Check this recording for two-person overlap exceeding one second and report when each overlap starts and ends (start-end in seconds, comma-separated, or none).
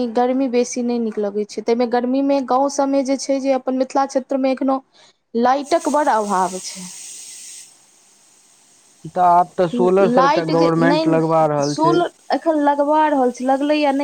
10.2-12.0